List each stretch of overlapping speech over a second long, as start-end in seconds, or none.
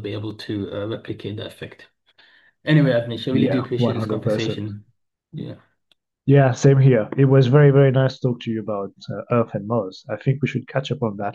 3.3-4.7